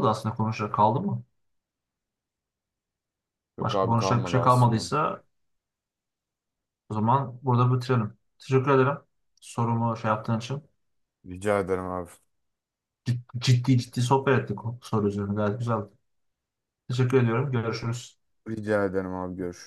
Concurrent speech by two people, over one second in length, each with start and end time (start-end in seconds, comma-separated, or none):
3.6-4.9